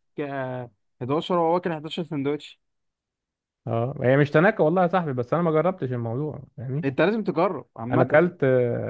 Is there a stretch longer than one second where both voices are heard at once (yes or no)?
no